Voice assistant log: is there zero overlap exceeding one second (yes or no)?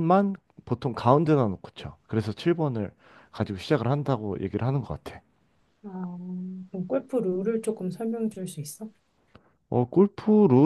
yes